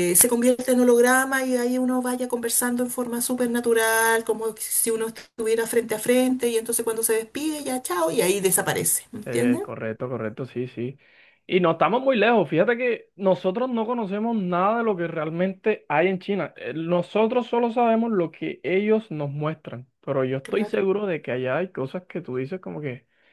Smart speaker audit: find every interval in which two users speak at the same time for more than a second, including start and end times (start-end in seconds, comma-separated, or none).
none